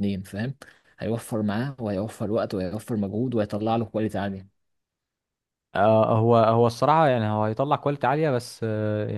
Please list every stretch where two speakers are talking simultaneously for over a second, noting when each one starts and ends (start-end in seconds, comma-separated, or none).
none